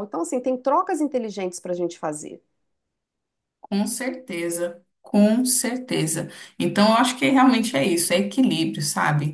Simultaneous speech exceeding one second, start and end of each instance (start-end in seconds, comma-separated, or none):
none